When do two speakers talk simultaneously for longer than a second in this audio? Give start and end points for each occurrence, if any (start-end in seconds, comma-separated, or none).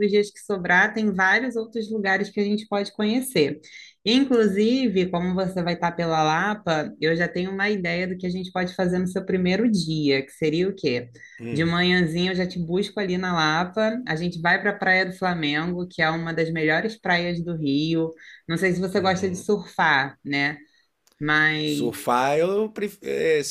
none